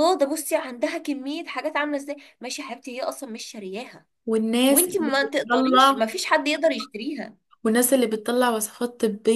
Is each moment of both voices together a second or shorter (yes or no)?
no